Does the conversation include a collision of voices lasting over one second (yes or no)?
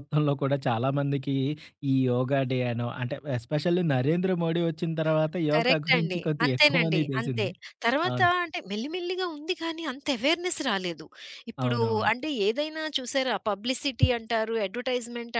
yes